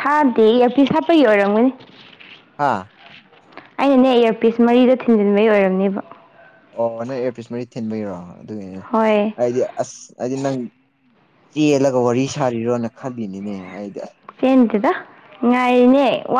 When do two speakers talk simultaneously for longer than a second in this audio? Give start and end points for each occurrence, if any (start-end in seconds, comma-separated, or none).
none